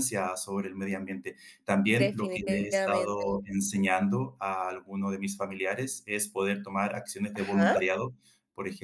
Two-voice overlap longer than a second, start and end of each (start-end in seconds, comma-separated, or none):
1.9-3.2